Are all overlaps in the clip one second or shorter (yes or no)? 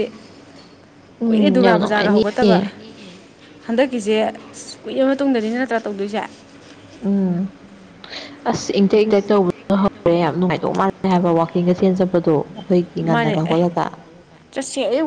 no